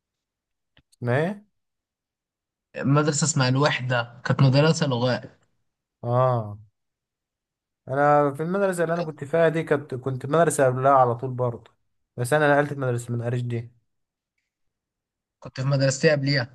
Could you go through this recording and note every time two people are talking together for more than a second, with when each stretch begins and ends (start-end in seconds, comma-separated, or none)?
none